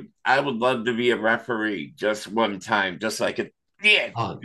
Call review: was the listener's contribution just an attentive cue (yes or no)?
no